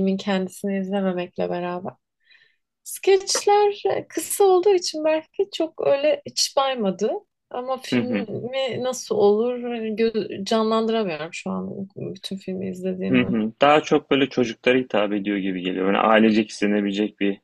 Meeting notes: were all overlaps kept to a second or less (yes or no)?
yes